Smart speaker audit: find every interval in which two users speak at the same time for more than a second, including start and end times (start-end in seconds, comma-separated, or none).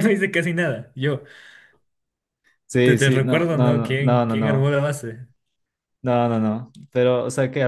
2.8-4.7